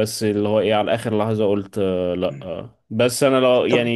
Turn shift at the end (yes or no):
no